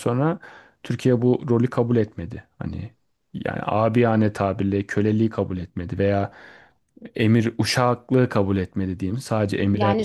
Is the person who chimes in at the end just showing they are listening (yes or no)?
no